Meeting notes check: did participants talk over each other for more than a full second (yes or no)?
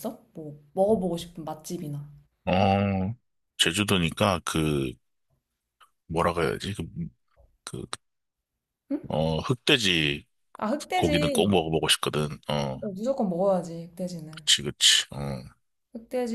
no